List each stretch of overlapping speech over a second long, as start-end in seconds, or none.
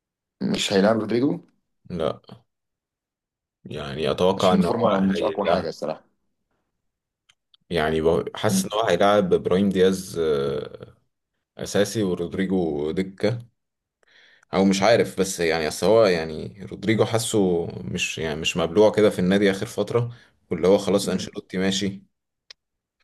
4.4-5.7